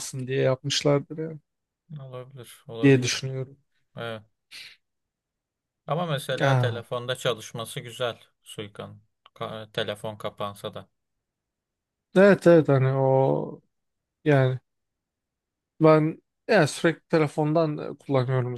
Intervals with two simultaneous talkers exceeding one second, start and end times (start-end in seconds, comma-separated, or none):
none